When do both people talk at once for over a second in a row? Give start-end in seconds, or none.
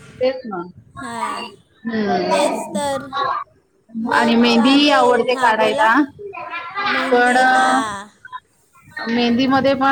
4.1-5.9